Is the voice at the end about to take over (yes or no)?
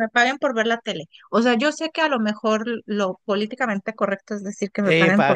yes